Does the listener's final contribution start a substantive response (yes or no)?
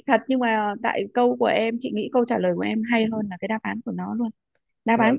no